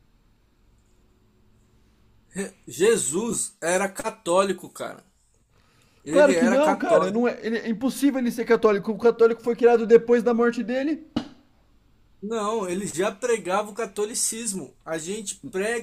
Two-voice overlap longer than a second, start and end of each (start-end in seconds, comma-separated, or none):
6.1-7.3